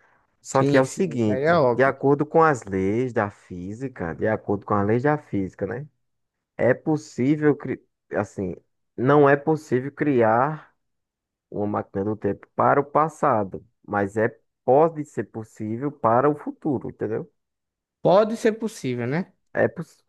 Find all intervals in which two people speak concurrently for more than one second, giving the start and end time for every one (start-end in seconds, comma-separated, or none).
0.5-2.0